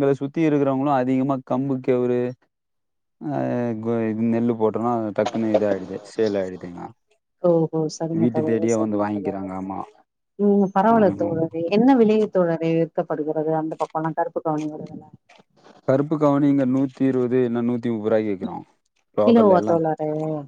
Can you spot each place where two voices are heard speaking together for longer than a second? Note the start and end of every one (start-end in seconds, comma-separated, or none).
none